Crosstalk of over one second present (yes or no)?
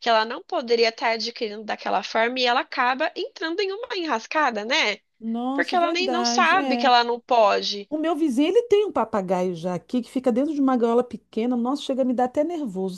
yes